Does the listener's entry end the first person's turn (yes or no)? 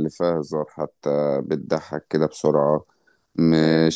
no